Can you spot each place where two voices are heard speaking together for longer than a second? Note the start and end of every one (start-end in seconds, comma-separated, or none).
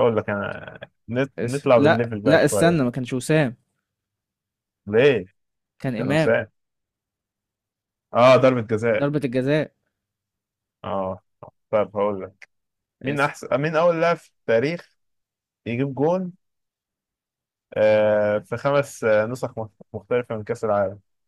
1.4-2.8